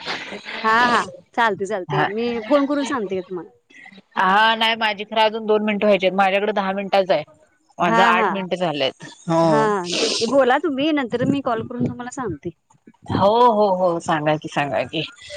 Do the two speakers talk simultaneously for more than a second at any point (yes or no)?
no